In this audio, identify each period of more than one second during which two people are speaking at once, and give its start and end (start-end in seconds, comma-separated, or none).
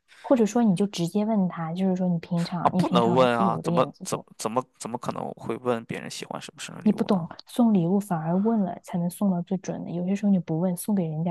2.6-4.3